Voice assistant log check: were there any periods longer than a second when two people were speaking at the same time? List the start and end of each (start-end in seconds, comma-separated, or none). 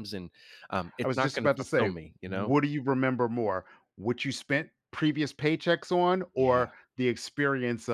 1.0-2.5